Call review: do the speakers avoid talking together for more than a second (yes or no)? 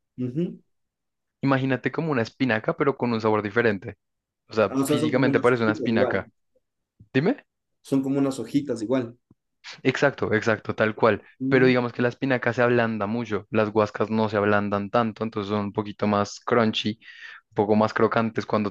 no